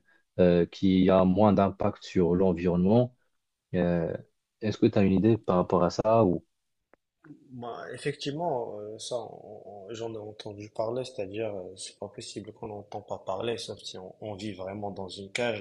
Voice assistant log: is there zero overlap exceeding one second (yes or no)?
yes